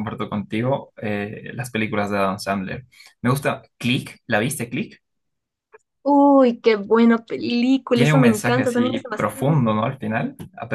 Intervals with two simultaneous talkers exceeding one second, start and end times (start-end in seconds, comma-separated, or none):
7.9-9.6